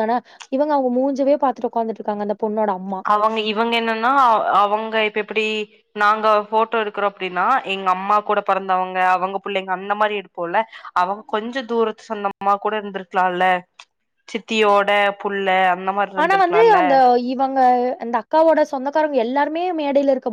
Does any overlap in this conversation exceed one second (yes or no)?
no